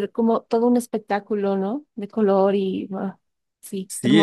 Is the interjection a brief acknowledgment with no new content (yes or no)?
no